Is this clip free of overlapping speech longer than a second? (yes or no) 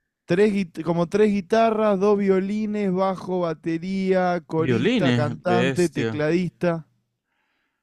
no